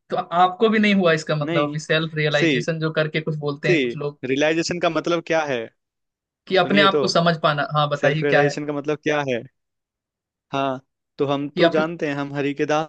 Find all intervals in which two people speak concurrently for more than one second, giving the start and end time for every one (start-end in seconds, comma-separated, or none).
none